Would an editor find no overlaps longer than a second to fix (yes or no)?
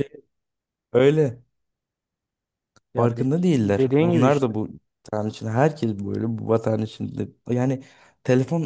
no